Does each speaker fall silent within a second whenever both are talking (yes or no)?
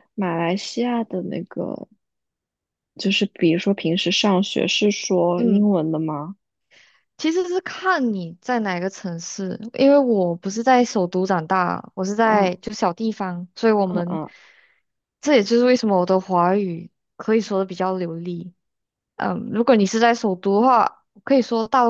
yes